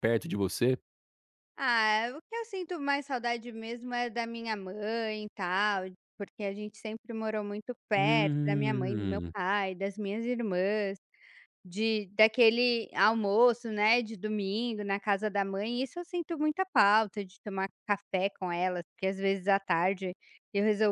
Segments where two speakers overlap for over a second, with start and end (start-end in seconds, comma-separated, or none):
7.9-9.3